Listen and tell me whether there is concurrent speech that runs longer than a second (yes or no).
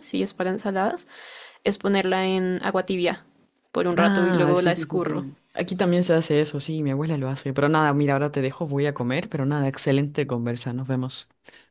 yes